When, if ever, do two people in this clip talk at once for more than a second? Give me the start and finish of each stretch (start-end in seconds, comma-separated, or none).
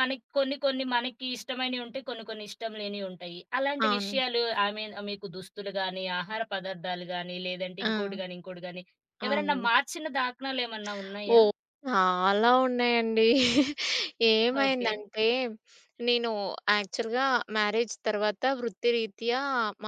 none